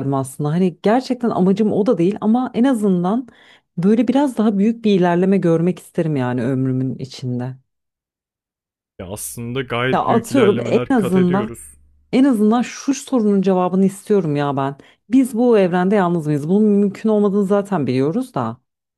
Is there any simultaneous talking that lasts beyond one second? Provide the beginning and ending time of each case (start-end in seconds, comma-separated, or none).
9.9-11.6